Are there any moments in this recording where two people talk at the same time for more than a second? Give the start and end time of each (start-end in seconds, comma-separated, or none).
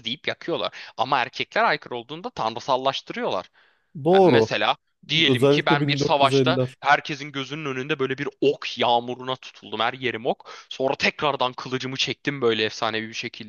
5.2-6.8